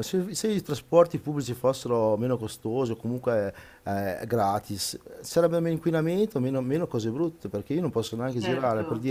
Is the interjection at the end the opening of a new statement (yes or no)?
no